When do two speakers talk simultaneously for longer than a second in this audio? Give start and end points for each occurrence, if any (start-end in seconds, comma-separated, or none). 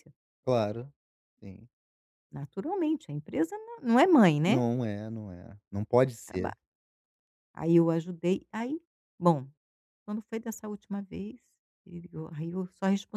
none